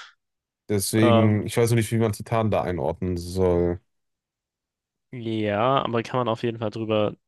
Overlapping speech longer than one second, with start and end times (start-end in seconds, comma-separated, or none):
none